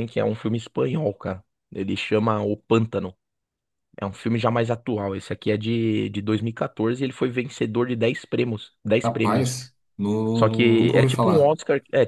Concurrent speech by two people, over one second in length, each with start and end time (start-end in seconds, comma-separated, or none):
10.3-11.5